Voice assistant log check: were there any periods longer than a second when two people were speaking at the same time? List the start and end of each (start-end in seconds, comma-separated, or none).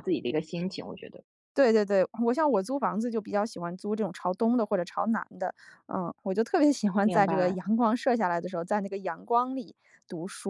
none